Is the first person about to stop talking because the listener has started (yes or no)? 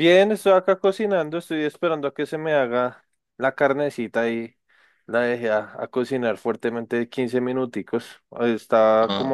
no